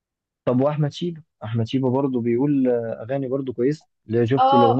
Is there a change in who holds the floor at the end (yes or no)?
yes